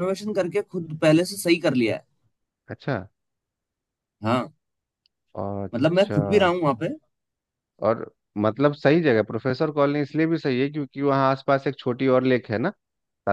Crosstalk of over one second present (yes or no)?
no